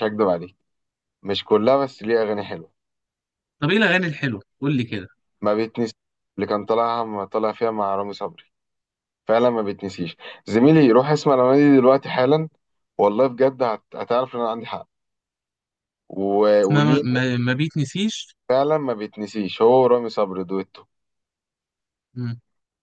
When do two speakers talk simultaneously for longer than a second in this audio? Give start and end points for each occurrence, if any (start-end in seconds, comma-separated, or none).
none